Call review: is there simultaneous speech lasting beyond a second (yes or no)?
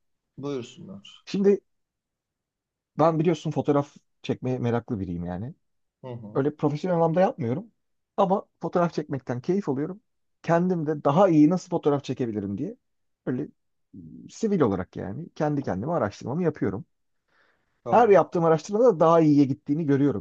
no